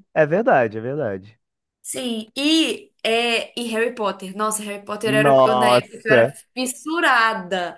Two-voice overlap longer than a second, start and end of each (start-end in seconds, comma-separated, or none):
5.0-6.3